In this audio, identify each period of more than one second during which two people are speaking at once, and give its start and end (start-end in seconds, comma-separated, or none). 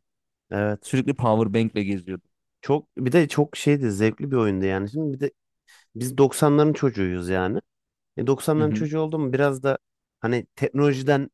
none